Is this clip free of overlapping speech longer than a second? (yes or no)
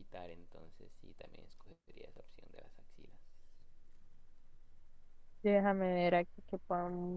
yes